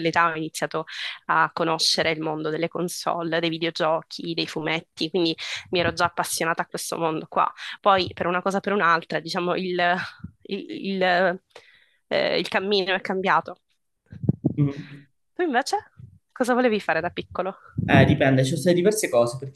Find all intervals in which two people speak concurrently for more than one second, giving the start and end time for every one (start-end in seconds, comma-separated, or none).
none